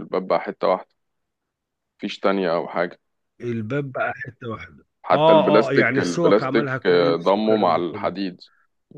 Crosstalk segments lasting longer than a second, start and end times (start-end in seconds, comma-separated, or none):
5.0-8.1